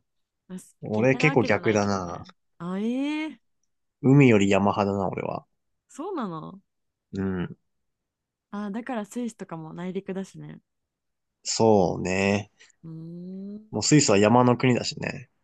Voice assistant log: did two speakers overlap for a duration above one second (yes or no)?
yes